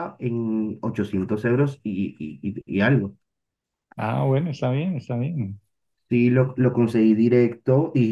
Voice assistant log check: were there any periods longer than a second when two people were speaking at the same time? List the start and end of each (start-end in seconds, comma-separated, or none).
none